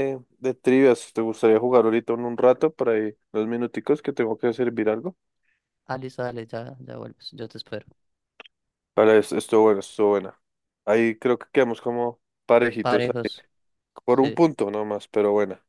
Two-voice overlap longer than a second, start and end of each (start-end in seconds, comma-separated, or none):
none